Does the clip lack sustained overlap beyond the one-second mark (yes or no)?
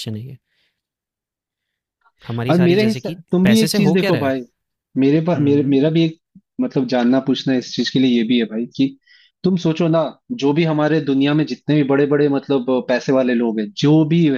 no